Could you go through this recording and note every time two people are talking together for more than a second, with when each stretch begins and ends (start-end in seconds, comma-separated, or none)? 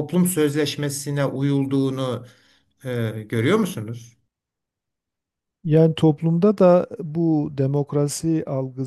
none